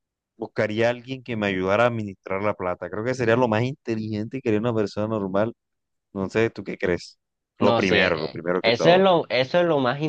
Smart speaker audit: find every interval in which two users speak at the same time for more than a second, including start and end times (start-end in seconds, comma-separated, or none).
7.6-9.1